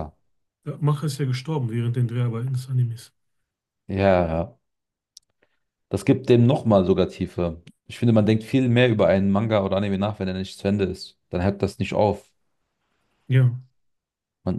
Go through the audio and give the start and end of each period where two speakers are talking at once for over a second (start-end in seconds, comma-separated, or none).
none